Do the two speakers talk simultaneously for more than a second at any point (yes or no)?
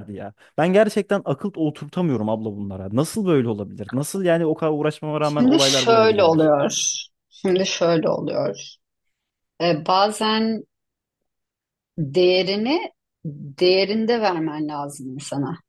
yes